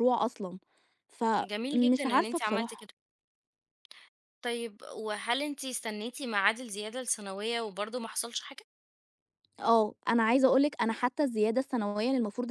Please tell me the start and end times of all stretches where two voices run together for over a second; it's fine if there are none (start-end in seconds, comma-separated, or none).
1.4-2.9